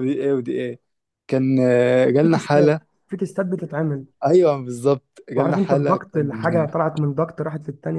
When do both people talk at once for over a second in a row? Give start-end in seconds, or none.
5.4-6.7